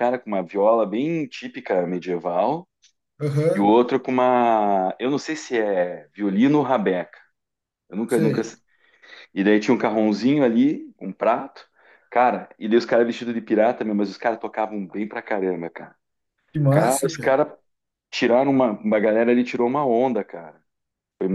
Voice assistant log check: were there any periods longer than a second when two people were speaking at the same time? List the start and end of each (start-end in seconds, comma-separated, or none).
none